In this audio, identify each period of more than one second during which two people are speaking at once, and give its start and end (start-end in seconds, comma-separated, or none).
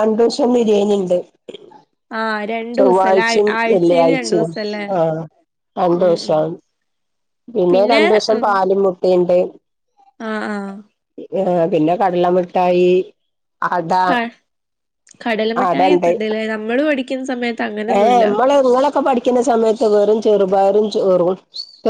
2.8-4.5